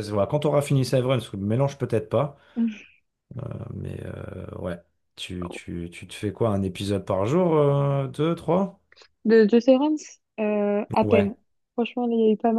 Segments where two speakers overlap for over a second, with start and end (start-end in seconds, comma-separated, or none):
none